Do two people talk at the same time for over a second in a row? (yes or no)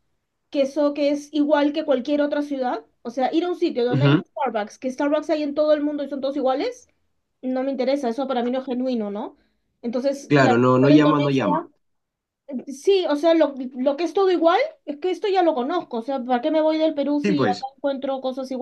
yes